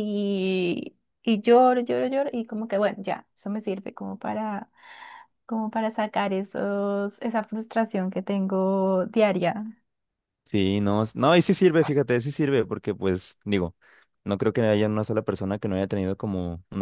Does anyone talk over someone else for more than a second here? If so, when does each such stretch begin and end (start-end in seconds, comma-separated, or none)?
none